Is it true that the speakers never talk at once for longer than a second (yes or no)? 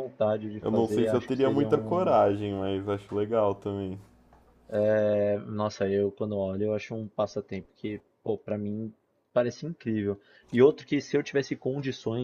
no